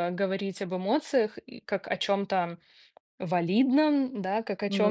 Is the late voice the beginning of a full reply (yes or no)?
no